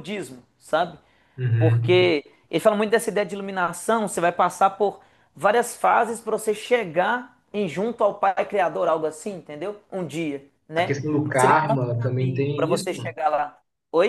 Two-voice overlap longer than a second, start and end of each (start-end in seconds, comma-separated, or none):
10.8-13.0